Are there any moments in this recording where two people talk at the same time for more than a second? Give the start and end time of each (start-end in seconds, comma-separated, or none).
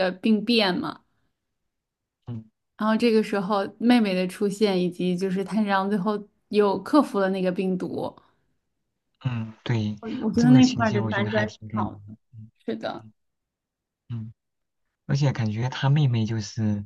10.4-12.0